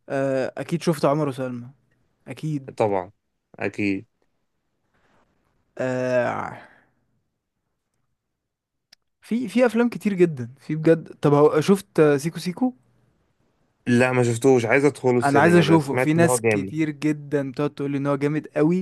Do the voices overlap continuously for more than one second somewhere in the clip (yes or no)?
yes